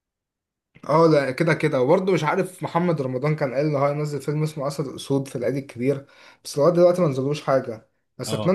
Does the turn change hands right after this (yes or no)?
no